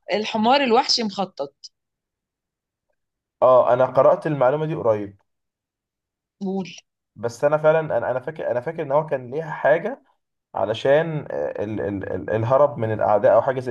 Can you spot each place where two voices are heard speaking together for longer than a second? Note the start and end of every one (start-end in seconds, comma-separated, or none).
none